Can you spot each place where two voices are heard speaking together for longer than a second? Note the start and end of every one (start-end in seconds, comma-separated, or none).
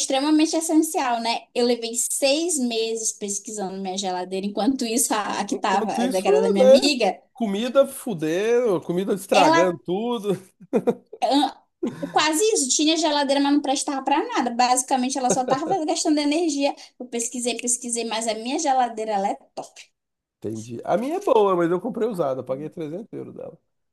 5.5-6.8